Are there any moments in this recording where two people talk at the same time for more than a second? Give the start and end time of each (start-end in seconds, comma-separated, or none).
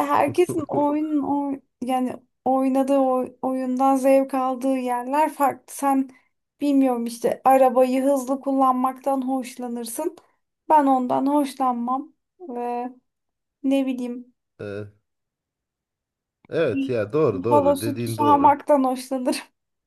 17.3-18.6